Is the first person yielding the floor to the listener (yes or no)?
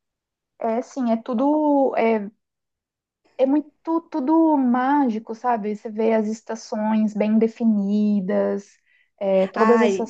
no